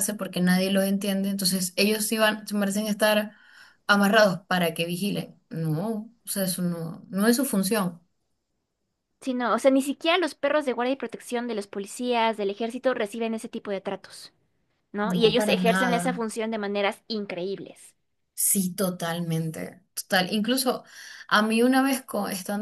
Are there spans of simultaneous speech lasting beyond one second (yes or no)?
yes